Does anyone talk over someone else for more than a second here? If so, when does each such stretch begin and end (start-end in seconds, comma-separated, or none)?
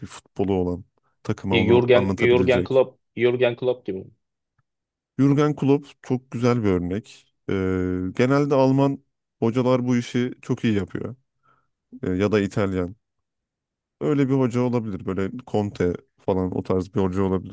1.5-2.8